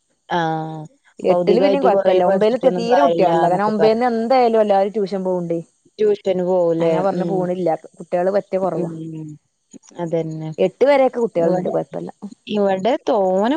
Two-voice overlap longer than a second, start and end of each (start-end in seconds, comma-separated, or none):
1.3-4.0